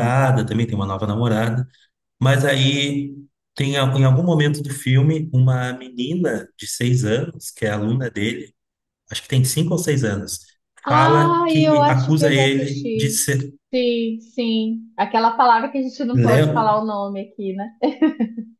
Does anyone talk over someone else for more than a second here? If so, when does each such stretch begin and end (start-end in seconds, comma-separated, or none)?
10.9-13.2